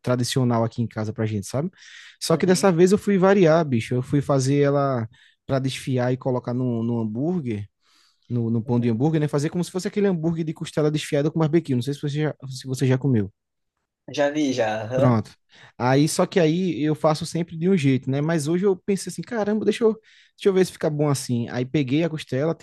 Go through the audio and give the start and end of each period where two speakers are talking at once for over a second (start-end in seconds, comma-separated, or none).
none